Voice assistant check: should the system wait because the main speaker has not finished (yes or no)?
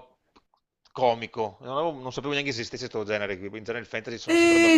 no